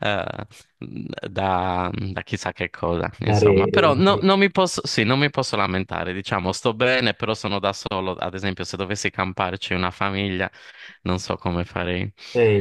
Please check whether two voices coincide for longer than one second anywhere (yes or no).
yes